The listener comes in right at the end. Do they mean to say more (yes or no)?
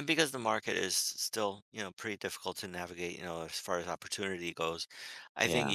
no